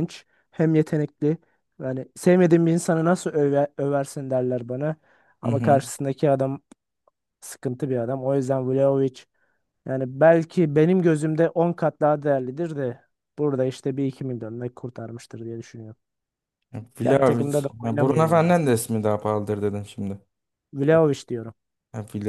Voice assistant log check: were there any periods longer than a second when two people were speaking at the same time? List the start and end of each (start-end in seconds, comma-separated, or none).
17.0-18.6